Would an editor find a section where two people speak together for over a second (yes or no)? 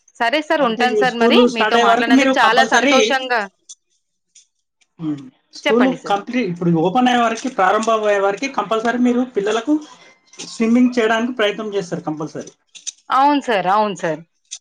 yes